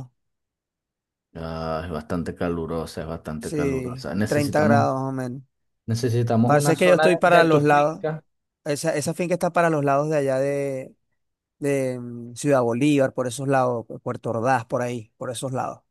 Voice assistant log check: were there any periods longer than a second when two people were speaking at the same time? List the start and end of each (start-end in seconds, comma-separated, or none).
3.4-4.9, 6.4-8.0